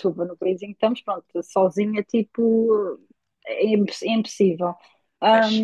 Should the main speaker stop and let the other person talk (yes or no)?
no